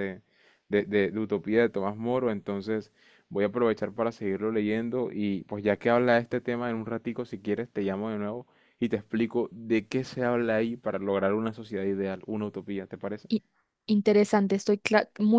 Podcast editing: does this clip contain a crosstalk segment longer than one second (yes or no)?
no